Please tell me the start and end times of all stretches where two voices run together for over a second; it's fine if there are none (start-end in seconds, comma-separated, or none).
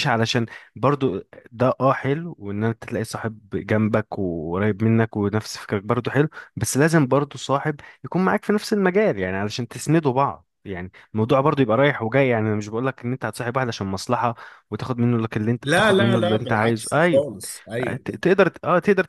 15.6-17.2